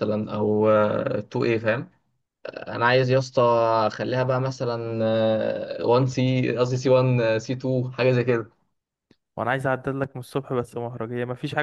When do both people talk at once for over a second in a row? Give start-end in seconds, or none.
none